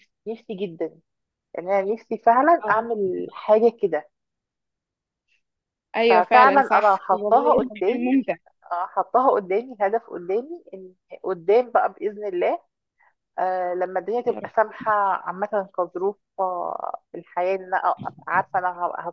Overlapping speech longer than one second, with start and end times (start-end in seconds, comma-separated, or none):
6.1-8.1